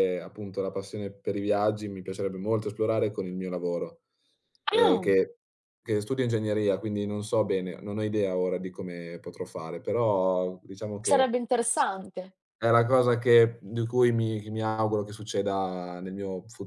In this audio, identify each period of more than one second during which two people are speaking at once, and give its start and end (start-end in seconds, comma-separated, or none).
none